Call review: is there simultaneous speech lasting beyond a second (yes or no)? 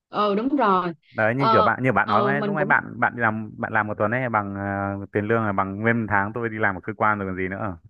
yes